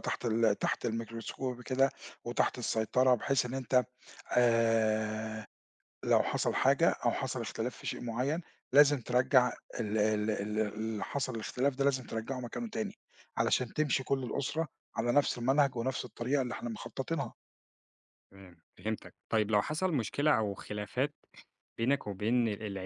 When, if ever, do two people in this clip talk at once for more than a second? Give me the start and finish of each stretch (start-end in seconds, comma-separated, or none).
none